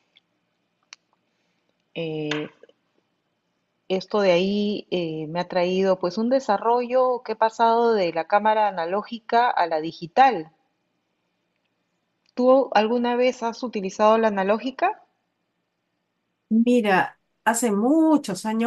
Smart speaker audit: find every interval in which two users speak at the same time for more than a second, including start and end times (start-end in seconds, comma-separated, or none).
none